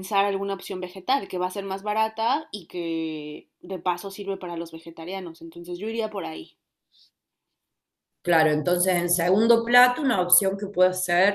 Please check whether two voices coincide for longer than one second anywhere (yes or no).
no